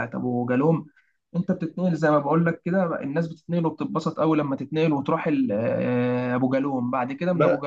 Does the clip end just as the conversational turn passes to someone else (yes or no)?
no